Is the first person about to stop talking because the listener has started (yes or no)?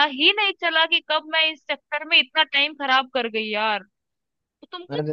no